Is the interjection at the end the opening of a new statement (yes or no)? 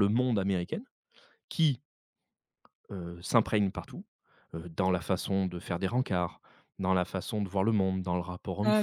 yes